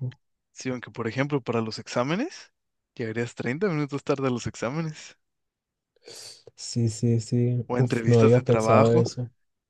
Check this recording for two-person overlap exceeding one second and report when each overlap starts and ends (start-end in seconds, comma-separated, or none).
7.7-9.0